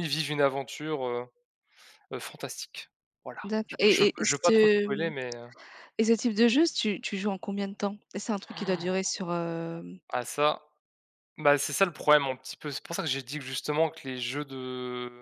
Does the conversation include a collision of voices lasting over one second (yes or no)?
yes